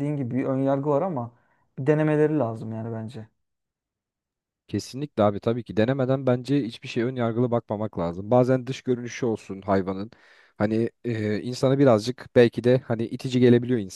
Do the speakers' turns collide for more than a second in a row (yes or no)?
no